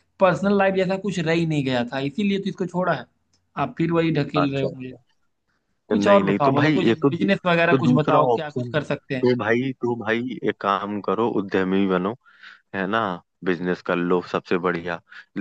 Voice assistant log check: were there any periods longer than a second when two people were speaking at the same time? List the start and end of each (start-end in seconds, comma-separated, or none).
5.9-9.3